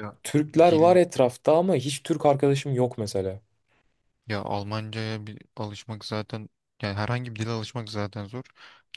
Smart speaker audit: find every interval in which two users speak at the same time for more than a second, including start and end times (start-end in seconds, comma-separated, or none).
none